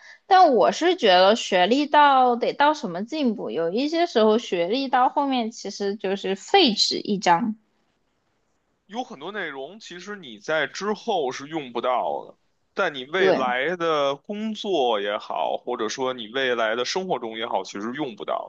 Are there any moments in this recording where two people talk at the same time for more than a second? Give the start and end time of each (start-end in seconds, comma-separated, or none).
none